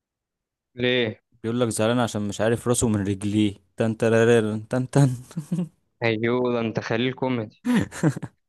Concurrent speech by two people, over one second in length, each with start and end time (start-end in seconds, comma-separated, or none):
none